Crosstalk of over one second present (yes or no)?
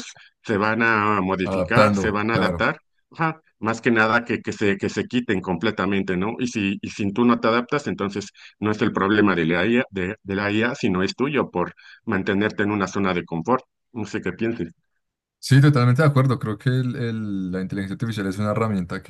yes